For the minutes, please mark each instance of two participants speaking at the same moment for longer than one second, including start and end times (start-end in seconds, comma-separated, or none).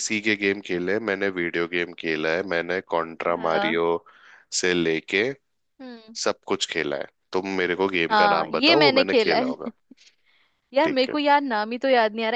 8.1-9.7